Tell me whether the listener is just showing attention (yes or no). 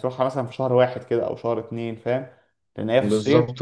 yes